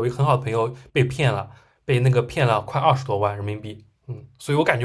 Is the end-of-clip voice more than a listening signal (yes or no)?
no